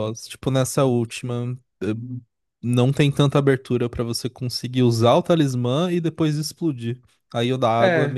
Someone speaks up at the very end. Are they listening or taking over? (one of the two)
listening